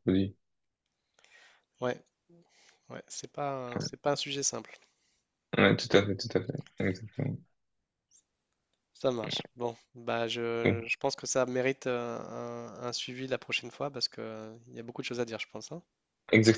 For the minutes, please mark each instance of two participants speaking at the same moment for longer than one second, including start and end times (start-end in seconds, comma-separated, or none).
none